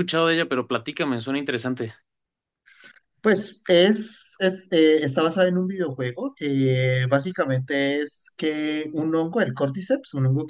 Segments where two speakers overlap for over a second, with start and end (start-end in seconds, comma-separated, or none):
none